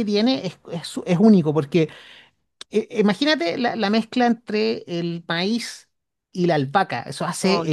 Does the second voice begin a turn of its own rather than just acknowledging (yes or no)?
no